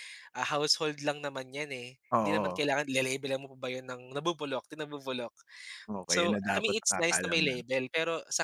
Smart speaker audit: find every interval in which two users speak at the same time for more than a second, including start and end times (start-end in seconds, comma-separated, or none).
6.1-7.5